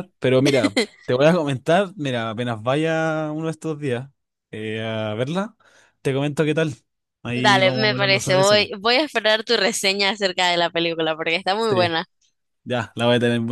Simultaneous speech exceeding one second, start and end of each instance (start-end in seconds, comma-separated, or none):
7.3-8.7